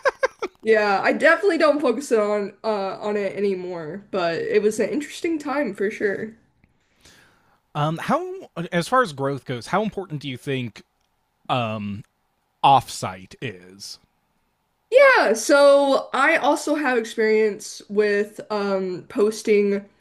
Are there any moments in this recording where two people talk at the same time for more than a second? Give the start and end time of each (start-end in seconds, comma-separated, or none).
none